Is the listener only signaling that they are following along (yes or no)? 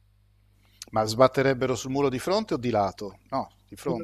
no